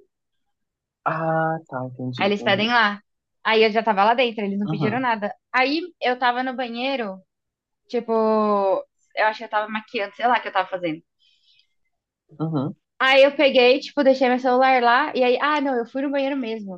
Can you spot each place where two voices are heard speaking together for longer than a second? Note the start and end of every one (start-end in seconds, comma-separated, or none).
none